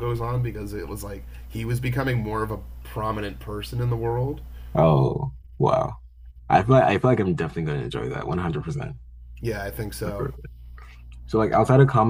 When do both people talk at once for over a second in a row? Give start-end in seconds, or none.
none